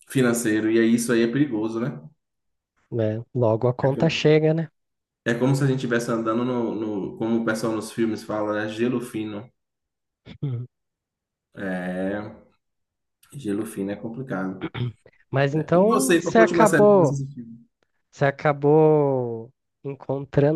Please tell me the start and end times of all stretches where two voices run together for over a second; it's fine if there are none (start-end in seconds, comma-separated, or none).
15.5-17.2